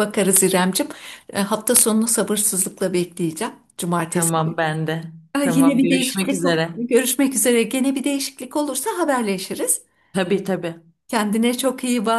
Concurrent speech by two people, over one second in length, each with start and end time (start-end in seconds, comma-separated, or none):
5.4-6.7